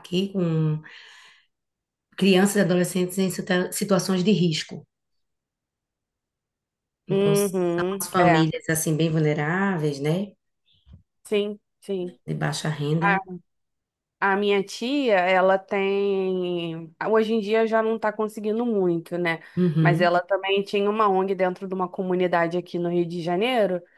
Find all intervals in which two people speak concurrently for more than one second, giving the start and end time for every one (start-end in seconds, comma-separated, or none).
7.1-8.5